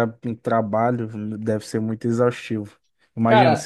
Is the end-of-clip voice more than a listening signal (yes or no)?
no